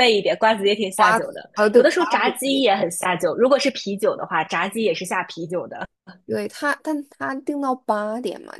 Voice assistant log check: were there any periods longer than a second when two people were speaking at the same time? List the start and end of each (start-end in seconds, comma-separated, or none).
0.9-2.7